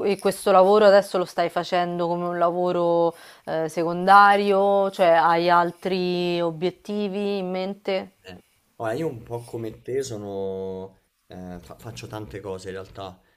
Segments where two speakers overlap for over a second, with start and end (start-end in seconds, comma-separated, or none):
none